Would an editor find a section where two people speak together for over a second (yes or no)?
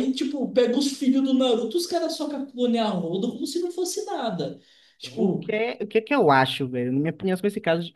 no